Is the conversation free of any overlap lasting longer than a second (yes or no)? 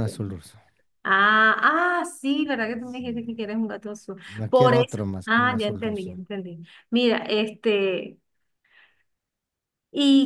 no